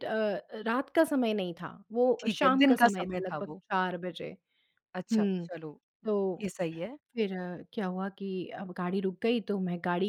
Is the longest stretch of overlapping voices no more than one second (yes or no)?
no